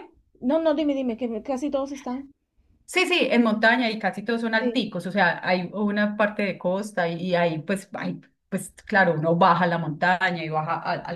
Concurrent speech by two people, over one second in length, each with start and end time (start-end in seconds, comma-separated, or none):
none